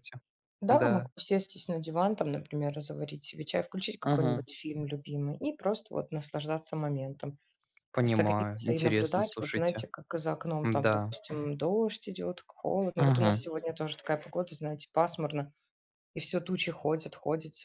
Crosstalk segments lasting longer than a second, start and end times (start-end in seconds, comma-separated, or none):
8.0-9.8